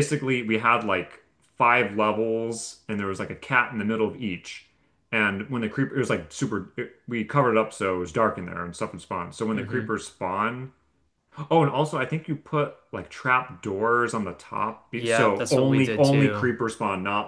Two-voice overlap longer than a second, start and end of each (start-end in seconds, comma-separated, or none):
14.9-16.5